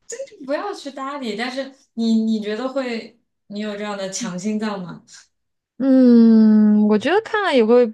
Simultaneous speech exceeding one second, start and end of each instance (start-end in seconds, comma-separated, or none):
none